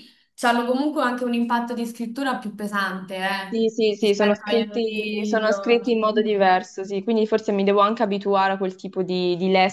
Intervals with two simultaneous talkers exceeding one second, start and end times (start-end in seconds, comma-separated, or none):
3.5-6.6